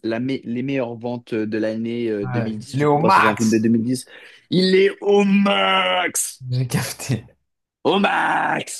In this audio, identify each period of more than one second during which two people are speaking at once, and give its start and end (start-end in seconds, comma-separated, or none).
2.2-3.6